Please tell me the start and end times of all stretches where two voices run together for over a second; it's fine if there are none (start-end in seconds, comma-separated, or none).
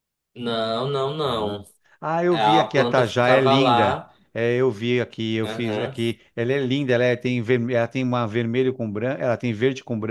2.3-4.1